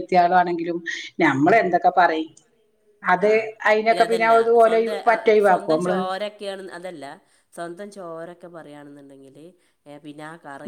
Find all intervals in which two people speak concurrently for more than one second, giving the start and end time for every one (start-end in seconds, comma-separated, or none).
none